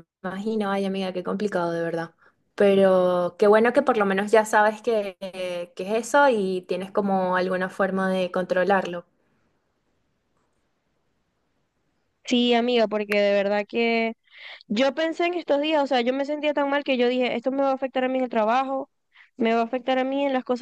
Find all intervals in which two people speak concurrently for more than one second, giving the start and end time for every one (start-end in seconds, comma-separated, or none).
none